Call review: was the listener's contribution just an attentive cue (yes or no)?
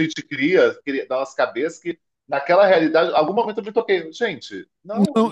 no